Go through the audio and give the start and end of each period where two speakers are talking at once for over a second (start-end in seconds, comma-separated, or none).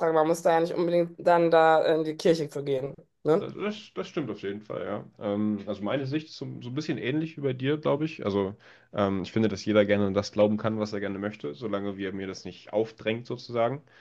none